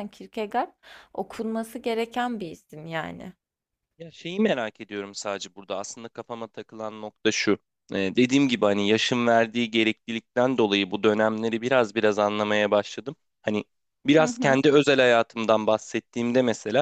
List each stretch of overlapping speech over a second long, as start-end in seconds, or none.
none